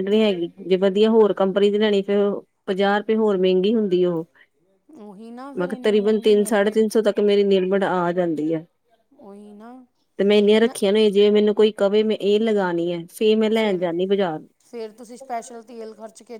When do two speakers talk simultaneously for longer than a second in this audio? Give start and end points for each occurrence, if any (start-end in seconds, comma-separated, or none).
5.6-6.8